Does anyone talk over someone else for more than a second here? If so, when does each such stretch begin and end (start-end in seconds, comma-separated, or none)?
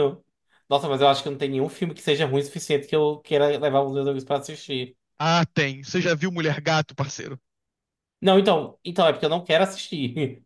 none